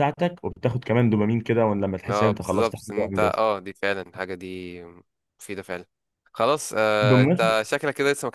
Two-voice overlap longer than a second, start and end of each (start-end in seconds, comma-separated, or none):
2.1-3.4